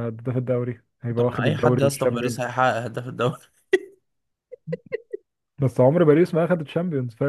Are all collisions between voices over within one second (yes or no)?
no